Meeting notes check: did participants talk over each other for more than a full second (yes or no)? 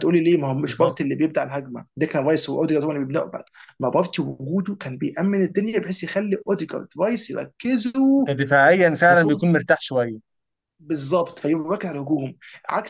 no